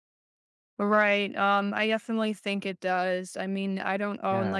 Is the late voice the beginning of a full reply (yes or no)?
no